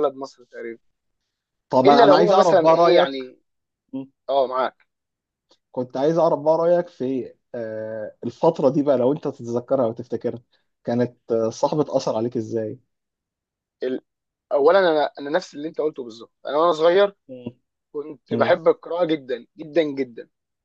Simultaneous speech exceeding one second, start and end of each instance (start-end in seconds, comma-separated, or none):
1.9-3.3